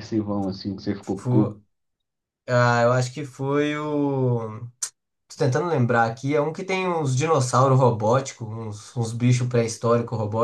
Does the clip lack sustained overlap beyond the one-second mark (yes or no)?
yes